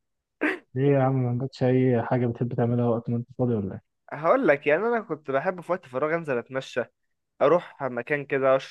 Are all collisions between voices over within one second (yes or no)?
yes